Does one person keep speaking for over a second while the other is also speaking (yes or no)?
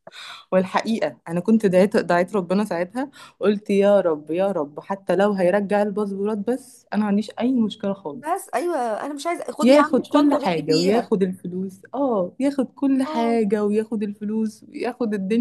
yes